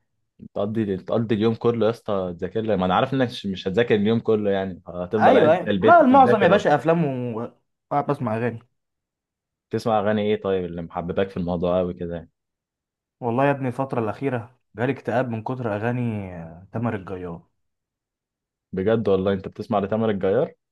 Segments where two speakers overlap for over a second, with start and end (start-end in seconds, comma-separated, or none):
5.2-6.6